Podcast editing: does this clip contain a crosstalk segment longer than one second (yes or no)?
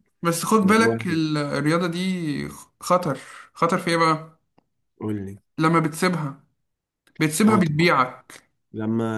no